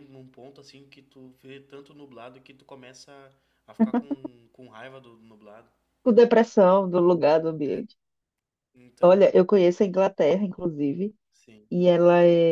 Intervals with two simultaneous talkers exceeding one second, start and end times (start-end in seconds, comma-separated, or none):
none